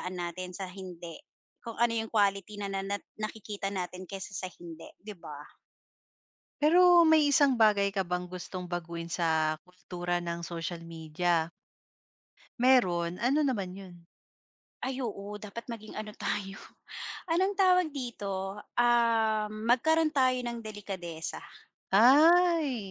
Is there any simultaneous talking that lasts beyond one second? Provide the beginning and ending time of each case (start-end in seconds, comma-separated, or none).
none